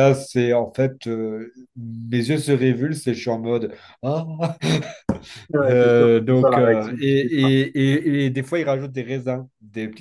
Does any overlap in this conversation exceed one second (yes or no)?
yes